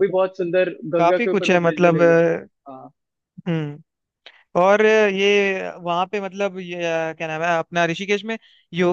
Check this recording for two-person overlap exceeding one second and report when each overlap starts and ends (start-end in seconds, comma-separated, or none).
1.0-2.2